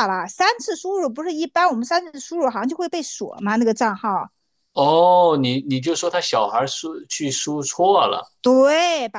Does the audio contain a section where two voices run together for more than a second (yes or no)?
no